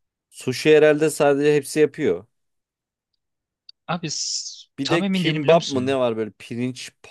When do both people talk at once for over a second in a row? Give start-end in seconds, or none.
4.8-6.0